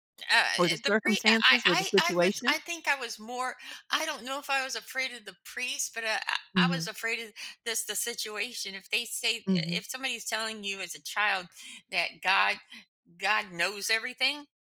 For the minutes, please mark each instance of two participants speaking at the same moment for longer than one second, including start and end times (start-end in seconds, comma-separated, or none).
0.8-2.6